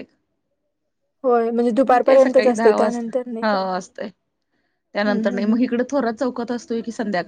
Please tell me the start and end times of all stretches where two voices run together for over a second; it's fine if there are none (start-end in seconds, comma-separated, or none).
1.9-3.6